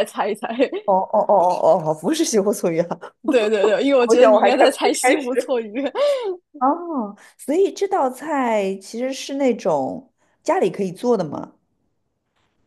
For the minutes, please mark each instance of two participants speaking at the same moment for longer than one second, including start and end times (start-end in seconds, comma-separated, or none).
4.1-5.6